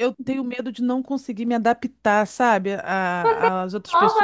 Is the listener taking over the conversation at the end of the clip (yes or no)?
yes